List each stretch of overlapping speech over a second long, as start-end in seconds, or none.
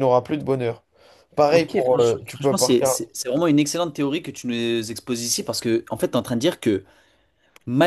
1.4-3.0